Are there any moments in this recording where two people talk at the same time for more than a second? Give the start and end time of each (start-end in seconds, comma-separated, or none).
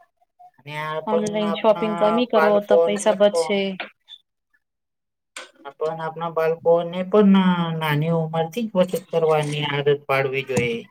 1.1-3.5